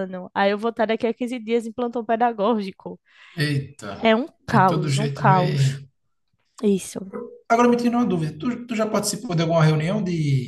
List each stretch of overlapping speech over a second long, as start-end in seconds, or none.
4.5-5.8